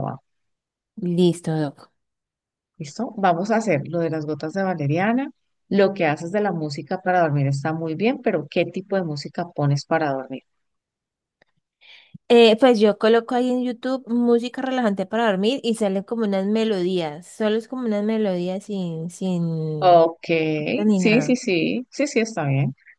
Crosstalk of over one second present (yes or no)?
no